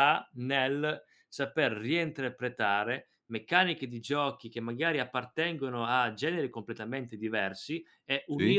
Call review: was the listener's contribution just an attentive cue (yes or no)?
yes